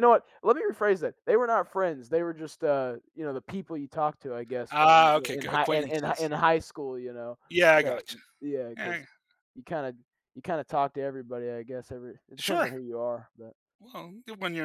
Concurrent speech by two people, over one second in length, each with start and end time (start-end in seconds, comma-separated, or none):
4.7-6.3